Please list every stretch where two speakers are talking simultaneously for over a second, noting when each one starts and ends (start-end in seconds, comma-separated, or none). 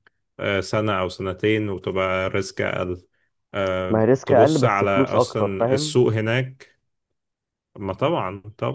3.9-6.0